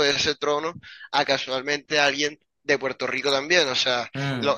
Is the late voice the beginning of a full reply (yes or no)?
no